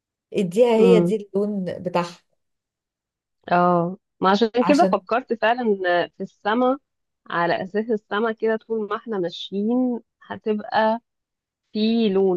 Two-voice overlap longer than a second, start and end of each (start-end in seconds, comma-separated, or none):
none